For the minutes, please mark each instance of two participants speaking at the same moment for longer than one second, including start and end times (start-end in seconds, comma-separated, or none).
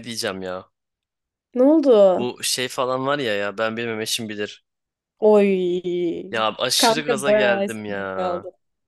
6.8-8.1